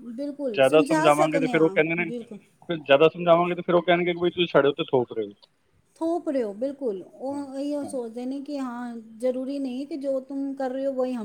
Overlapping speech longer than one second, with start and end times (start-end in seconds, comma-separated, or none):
0.5-2.1